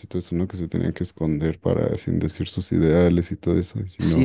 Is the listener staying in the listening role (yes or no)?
no